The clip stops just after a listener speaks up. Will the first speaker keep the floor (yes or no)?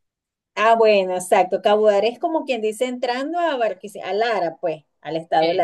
yes